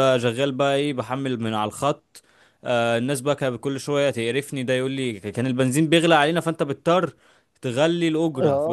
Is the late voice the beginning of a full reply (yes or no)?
yes